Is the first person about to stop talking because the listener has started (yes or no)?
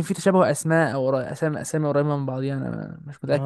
yes